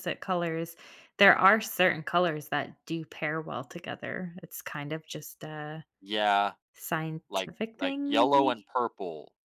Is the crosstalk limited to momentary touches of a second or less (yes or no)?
no